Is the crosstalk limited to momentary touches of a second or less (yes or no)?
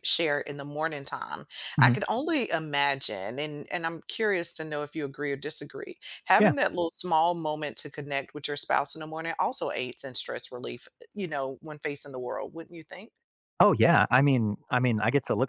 yes